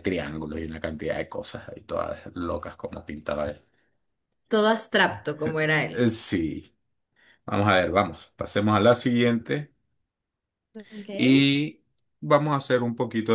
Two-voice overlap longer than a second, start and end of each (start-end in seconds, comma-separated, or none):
none